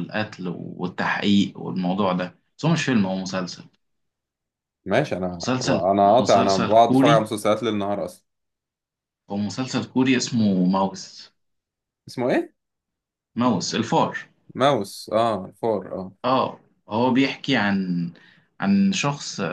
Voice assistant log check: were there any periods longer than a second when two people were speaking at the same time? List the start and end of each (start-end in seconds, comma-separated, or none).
5.4-7.3